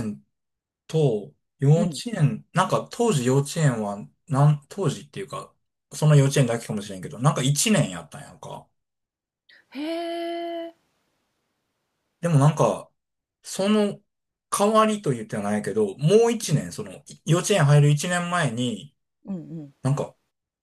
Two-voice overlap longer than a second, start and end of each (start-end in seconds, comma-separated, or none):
none